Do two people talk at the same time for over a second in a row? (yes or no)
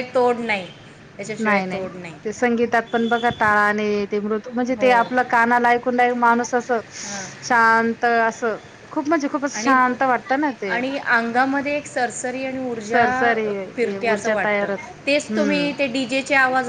yes